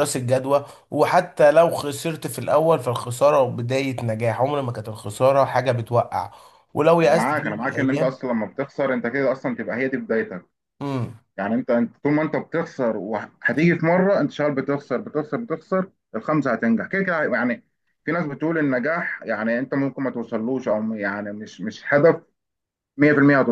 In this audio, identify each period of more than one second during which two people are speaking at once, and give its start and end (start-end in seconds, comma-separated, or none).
7.0-8.2